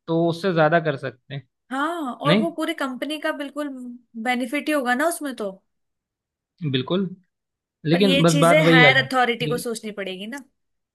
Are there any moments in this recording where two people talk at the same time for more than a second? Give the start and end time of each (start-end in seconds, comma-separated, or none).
7.9-9.7